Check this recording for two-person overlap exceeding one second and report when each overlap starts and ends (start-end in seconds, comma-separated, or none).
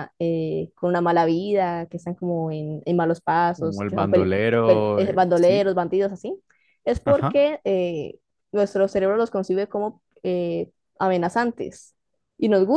3.5-5.7